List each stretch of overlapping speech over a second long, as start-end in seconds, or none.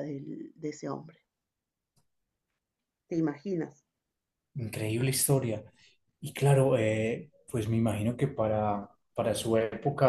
none